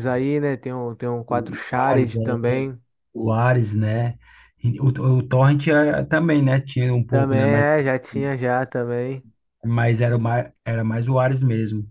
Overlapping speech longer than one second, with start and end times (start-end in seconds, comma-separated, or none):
1.3-2.7